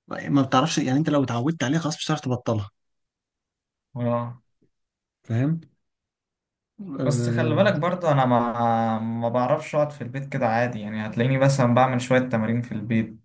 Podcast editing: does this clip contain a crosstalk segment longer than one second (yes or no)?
no